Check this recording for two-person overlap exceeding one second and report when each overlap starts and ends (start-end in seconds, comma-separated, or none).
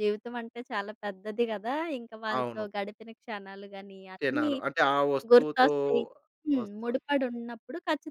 none